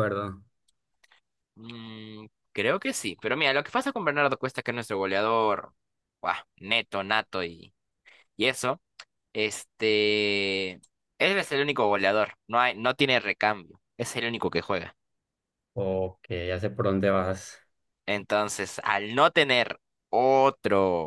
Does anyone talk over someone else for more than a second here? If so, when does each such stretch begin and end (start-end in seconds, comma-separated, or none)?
none